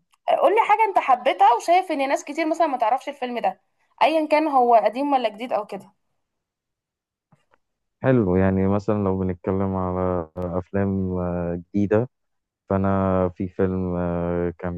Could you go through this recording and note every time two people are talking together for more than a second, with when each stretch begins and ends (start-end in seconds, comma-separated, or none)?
none